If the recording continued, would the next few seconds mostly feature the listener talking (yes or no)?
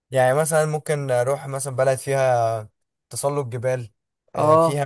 no